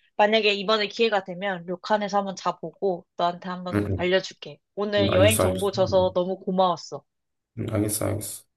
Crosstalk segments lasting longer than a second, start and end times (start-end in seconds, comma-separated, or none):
5.0-6.2